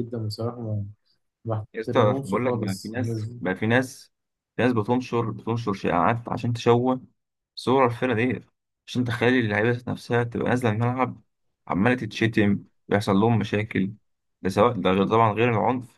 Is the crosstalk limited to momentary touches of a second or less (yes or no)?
no